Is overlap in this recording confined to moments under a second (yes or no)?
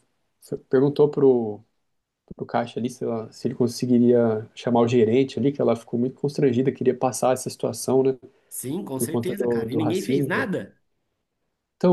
no